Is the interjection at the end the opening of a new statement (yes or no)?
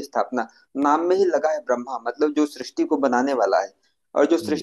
no